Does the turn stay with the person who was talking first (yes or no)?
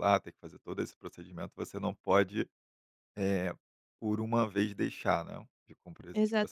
no